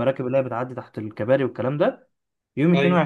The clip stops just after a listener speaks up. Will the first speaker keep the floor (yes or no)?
yes